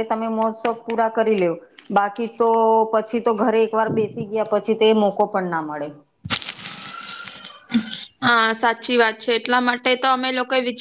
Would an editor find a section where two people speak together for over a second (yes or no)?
no